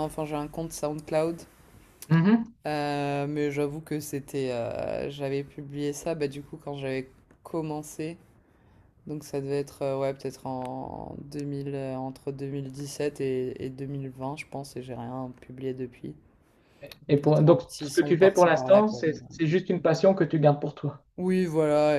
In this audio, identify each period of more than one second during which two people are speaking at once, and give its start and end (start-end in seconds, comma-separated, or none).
17.1-19.2